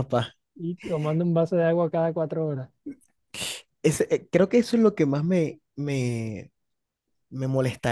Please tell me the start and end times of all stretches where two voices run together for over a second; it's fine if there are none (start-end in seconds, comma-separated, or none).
none